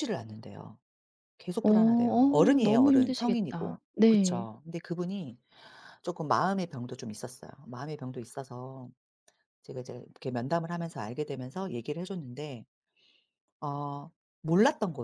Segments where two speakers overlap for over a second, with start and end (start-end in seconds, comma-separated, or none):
1.6-4.5